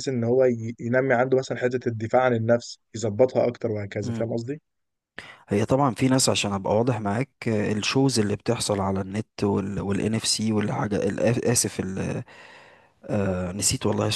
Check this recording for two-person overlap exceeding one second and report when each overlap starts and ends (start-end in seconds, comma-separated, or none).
none